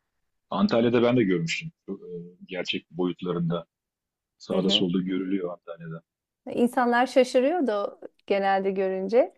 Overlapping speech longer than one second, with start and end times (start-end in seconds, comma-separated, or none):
none